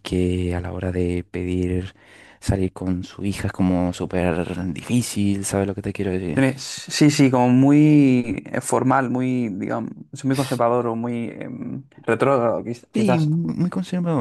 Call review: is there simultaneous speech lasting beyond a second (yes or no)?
no